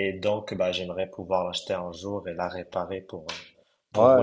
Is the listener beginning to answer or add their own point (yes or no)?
yes